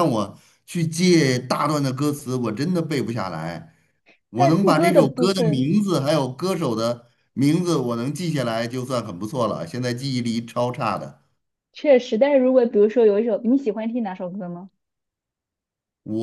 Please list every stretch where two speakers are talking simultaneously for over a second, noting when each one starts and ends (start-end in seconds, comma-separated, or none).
4.3-5.7